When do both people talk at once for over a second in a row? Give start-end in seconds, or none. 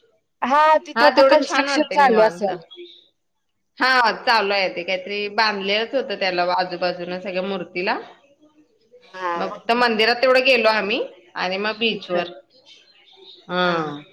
0.9-2.5